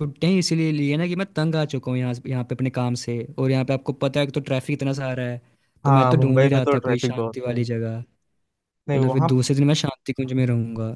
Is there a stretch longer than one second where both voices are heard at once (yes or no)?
yes